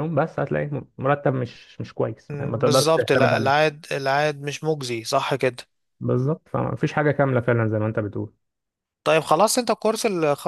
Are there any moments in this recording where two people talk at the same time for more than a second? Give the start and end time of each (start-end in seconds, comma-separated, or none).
2.3-3.6